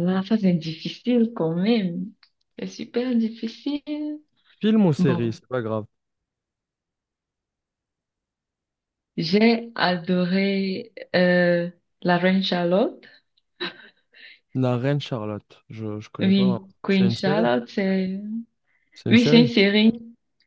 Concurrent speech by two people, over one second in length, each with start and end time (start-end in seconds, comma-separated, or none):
16.2-17.5